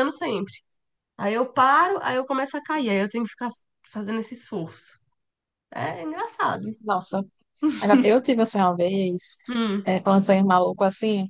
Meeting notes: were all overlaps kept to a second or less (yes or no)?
yes